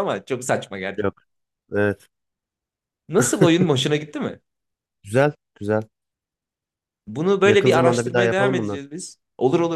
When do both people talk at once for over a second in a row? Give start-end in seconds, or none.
7.4-8.8